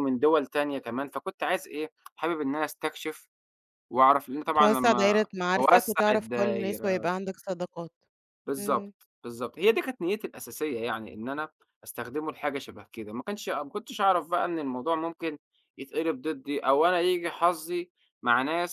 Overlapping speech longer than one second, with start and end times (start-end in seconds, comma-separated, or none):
4.5-7.0